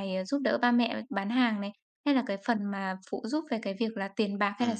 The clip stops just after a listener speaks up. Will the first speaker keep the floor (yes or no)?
no